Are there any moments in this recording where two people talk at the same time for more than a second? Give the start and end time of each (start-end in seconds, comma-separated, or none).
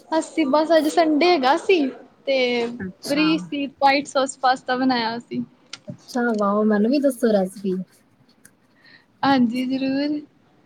none